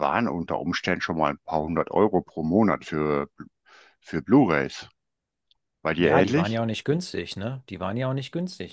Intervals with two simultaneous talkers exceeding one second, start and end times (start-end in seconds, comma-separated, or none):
none